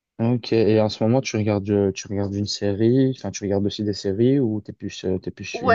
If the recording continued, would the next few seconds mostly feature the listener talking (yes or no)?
yes